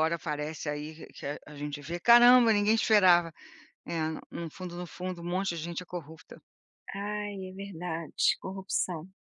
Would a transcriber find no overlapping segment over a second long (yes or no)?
yes